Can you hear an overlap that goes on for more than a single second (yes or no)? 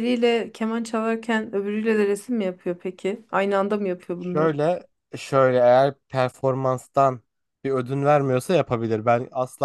no